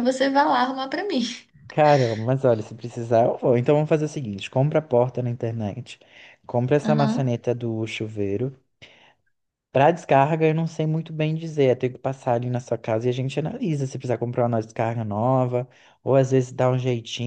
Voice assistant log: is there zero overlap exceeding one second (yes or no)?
yes